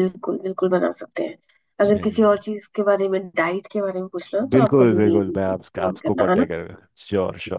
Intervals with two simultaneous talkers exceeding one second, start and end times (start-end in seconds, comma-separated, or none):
4.5-6.5